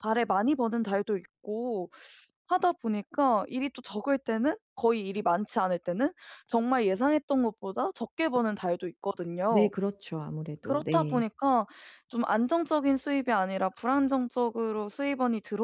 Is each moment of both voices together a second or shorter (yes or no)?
yes